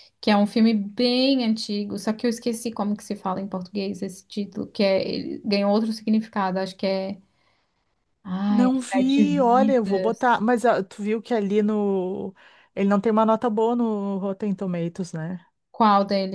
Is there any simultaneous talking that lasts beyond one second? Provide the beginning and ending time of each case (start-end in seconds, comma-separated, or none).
8.5-10.4